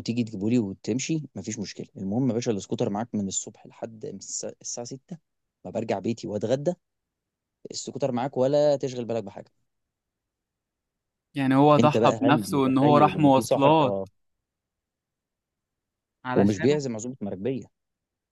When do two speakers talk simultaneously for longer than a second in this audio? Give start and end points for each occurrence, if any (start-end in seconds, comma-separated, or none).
11.8-14.0